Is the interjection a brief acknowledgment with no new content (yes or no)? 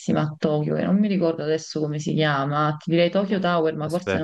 yes